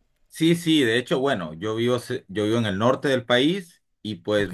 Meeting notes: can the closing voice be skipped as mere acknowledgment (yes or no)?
yes